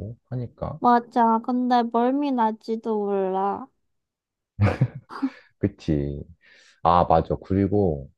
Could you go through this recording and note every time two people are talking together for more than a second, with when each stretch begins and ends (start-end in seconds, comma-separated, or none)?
none